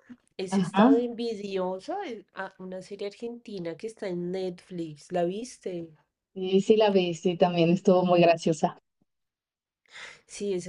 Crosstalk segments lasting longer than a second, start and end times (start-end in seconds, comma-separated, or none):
none